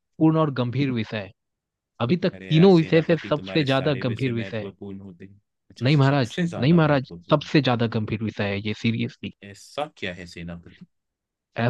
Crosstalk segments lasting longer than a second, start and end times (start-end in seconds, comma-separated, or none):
2.3-4.7, 5.8-7.5